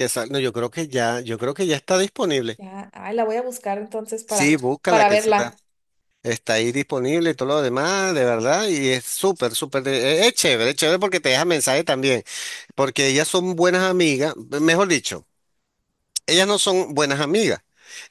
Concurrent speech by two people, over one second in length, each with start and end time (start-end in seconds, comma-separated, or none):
4.2-5.5